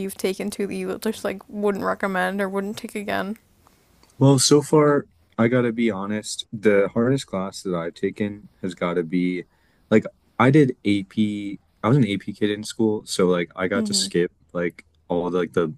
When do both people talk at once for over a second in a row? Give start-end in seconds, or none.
none